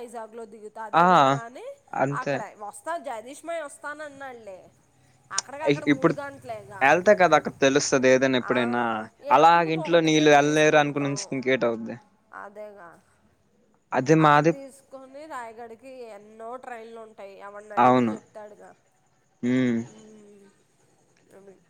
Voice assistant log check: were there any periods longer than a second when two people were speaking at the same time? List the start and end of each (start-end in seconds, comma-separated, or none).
9.3-11.2